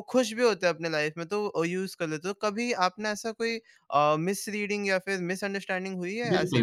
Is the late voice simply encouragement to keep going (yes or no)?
no